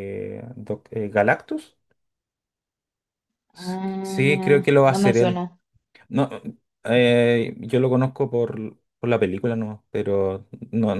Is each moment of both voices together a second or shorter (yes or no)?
no